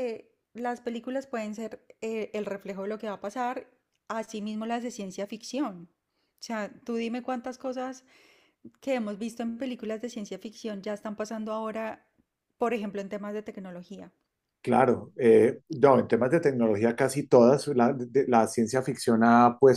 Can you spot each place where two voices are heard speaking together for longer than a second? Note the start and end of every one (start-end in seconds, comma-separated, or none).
none